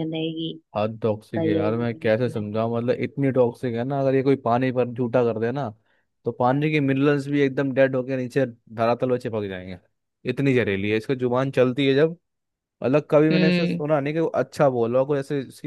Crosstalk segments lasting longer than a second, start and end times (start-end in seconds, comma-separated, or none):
1.1-2.6